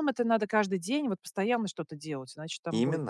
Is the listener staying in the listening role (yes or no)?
no